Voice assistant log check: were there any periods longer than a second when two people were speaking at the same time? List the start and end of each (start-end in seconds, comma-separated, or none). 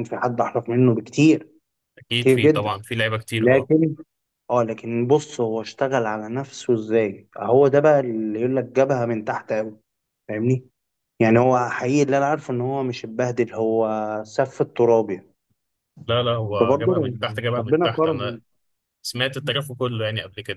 16.6-18.4